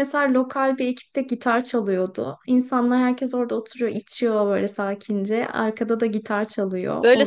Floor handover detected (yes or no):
yes